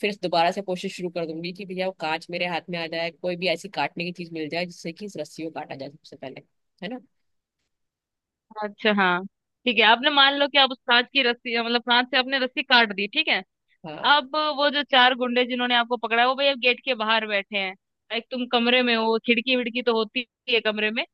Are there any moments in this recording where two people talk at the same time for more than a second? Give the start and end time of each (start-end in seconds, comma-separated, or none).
none